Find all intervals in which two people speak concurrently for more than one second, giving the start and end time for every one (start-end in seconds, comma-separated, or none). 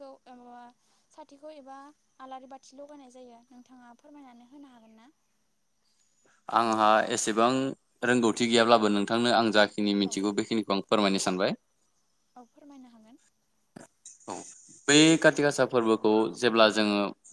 none